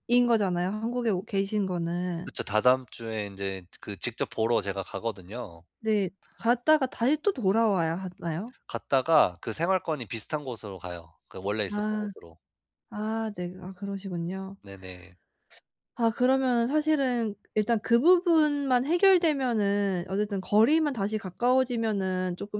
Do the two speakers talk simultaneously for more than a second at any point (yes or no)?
no